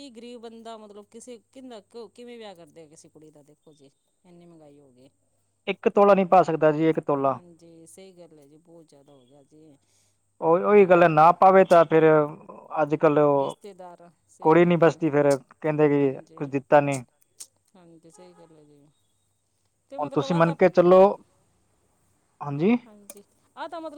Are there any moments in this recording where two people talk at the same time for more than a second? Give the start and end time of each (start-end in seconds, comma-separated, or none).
none